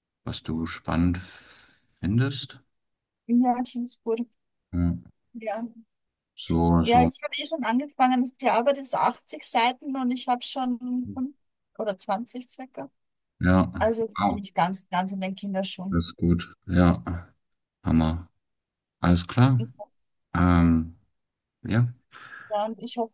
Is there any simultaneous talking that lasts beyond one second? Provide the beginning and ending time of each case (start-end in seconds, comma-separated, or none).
none